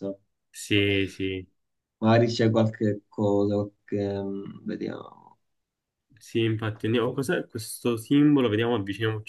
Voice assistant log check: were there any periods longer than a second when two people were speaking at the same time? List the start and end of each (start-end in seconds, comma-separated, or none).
none